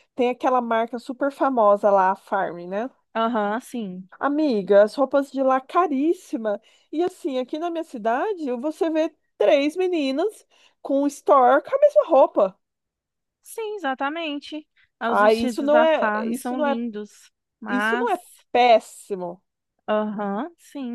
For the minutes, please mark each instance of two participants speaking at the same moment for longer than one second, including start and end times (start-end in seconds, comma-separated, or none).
15.1-16.8